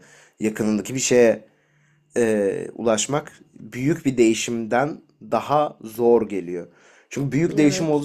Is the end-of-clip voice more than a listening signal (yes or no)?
no